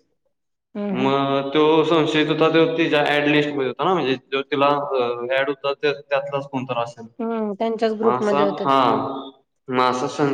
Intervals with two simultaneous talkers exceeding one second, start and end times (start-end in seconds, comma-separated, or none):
none